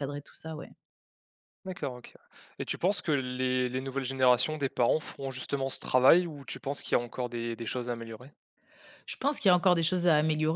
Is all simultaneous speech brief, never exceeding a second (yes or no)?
yes